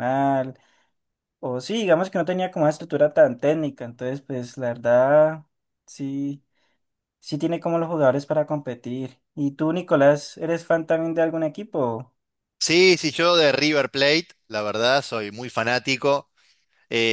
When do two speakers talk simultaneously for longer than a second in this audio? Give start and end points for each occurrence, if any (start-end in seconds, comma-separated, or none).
none